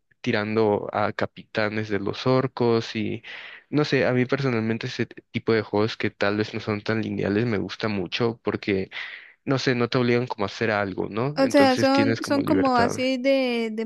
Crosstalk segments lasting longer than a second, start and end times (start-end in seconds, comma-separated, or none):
11.3-12.9